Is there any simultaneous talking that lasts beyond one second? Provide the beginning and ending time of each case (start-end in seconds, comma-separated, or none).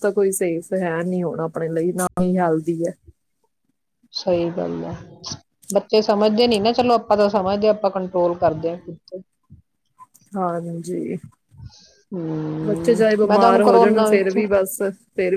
12.7-14.4